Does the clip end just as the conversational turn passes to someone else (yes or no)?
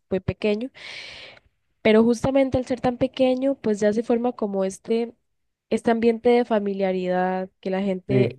no